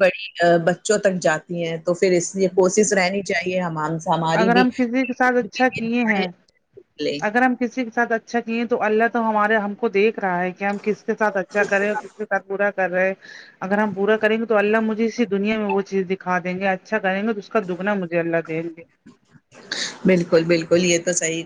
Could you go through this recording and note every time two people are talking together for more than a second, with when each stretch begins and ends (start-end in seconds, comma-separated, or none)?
none